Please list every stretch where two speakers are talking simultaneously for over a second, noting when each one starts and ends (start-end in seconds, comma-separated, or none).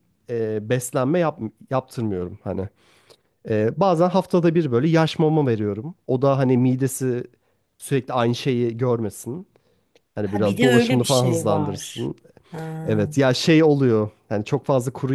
10.2-12.1